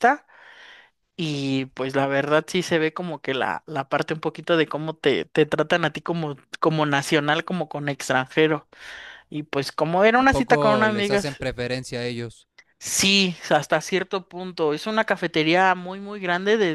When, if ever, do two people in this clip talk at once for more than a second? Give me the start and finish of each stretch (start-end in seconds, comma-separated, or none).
10.1-11.4